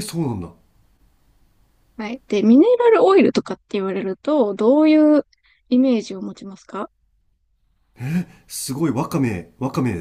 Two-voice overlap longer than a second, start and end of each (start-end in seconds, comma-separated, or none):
none